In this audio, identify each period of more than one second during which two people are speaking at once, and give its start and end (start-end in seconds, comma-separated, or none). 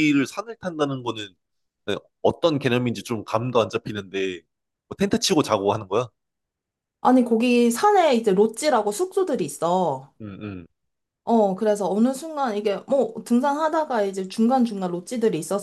none